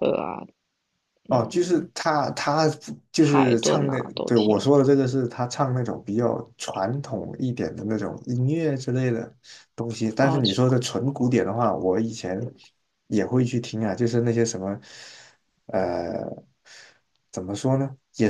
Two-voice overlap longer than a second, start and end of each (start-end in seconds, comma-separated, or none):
3.2-4.7